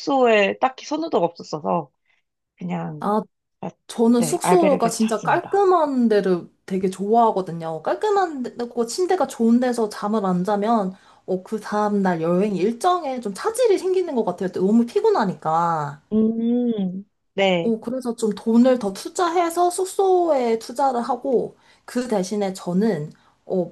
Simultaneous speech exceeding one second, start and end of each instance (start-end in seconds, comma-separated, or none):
4.2-5.7